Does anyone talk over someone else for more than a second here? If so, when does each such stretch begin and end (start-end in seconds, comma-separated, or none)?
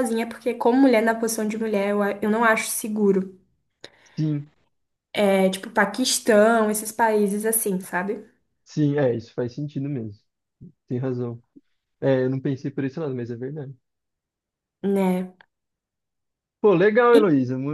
none